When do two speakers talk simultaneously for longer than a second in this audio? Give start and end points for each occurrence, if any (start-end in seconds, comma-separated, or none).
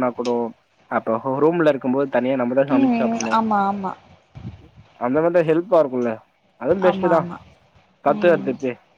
none